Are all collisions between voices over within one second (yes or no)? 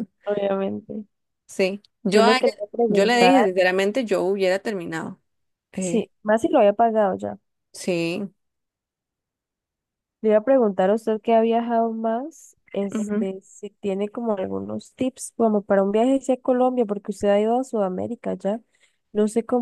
no